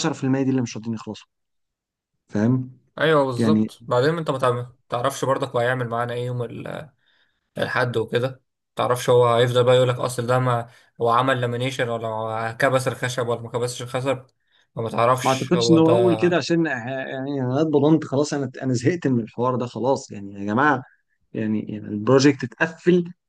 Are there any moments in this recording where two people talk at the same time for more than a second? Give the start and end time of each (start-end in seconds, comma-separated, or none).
none